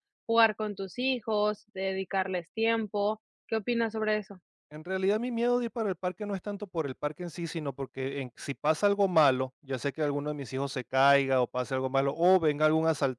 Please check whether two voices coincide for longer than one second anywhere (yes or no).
no